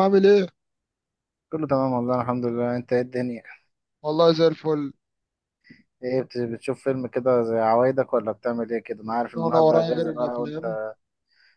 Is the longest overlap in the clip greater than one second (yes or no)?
yes